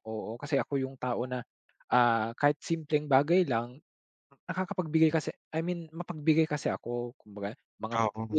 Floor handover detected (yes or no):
no